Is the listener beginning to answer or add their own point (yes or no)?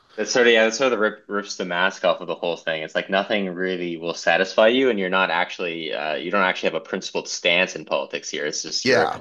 no